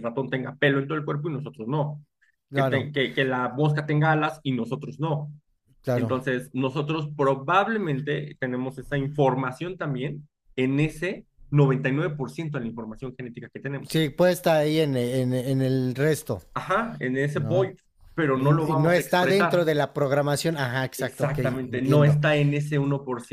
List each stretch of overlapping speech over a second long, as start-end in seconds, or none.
18.3-19.7, 21.0-22.2